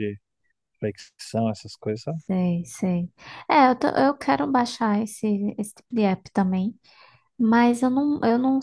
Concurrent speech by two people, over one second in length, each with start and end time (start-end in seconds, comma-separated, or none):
none